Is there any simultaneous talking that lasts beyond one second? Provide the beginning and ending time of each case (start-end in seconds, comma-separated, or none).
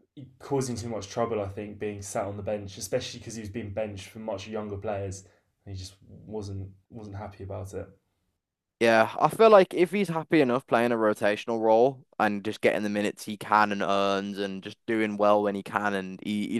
none